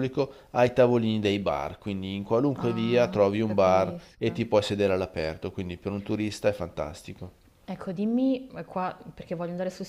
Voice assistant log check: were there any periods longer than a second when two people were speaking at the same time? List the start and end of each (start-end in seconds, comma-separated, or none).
2.5-4.4